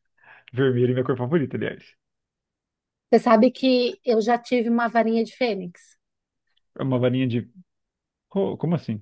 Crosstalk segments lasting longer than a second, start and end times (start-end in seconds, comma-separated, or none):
none